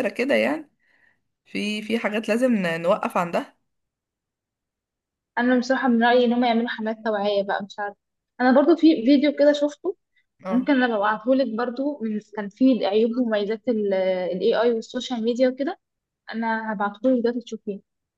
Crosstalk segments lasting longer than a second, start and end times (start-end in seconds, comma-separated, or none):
none